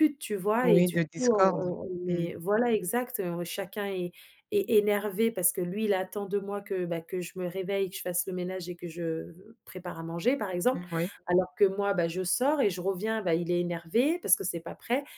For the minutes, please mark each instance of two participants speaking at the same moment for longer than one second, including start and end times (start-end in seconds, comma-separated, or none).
0.6-2.3